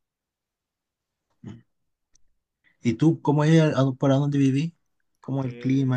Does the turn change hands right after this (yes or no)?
yes